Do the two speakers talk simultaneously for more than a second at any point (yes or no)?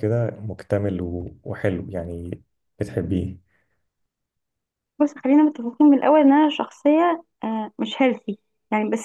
no